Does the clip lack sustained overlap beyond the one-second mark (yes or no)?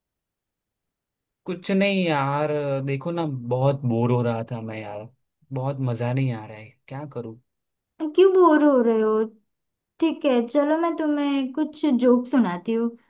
yes